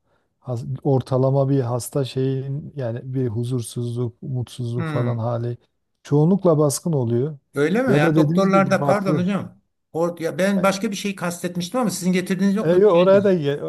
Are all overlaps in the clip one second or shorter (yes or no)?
no